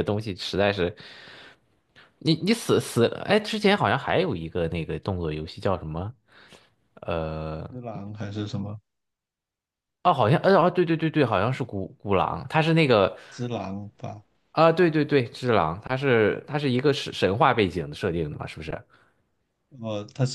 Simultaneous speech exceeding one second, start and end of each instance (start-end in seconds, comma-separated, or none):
none